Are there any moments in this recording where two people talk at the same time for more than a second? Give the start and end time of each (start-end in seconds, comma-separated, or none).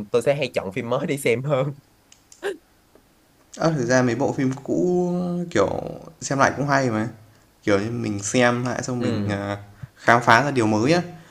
none